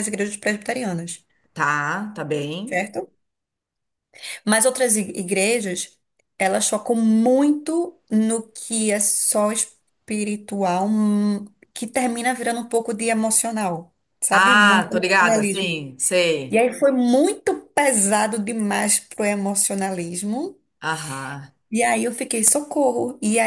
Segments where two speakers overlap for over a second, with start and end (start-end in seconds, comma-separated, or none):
14.3-15.9